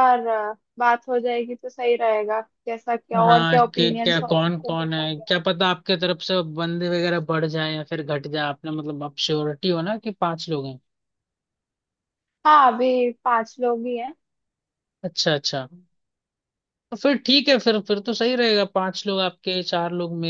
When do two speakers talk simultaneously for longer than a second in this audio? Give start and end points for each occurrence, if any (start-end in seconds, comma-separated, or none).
3.1-5.2